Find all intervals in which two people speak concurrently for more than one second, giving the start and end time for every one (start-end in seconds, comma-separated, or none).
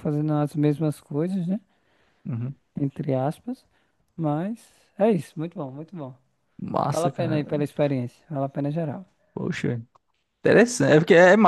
none